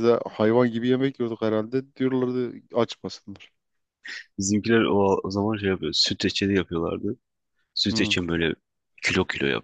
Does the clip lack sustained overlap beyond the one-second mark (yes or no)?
yes